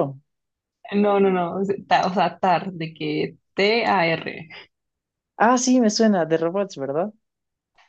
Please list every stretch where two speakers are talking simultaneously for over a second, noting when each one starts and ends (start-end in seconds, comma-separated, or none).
none